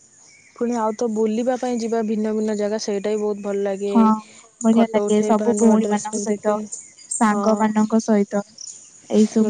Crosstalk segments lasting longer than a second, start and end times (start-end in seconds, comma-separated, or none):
4.8-6.5